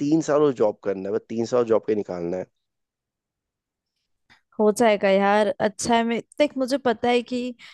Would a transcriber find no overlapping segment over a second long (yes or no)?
yes